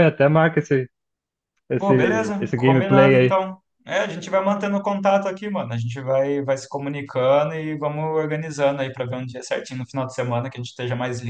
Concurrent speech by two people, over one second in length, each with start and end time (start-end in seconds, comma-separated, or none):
1.8-3.4